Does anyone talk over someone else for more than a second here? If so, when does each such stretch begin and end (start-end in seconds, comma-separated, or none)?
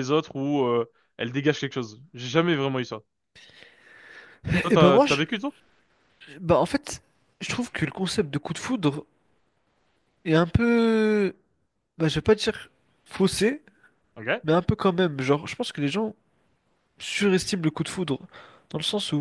none